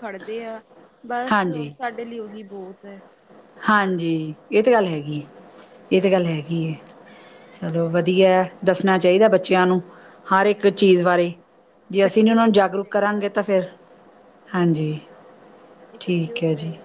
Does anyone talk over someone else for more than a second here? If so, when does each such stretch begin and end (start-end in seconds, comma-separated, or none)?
11.9-13.4